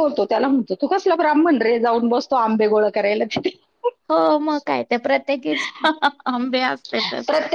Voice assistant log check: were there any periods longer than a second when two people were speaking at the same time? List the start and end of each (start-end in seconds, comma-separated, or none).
none